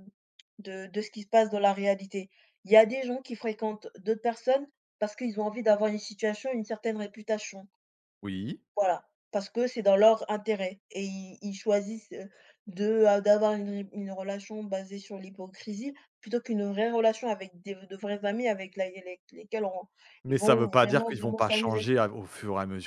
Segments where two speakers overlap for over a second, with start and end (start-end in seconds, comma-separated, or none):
20.3-21.9